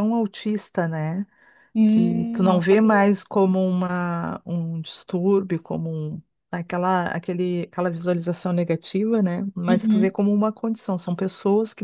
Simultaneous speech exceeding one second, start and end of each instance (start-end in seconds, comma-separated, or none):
1.9-3.1